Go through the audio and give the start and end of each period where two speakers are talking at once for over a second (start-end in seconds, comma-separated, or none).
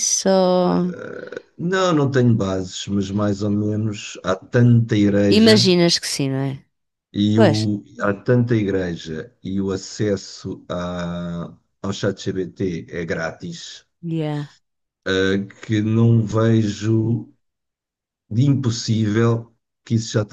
none